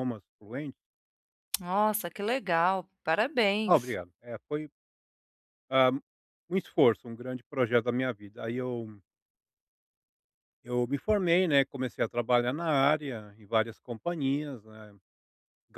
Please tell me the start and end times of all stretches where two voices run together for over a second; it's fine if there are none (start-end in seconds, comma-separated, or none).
none